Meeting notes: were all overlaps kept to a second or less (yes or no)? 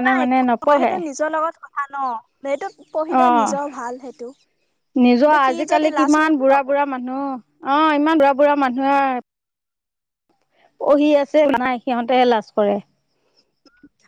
no